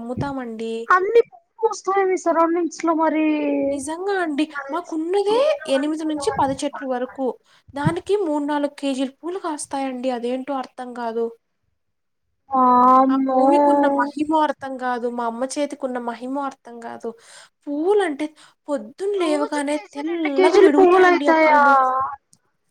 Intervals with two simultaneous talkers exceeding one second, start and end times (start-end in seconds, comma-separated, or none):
19.2-21.6